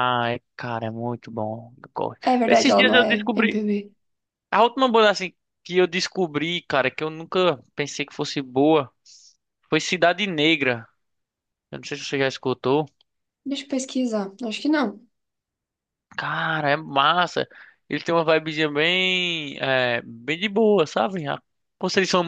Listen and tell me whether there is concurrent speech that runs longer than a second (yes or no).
yes